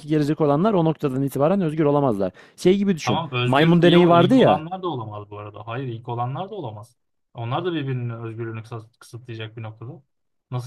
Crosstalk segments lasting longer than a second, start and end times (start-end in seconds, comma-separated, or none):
3.0-4.6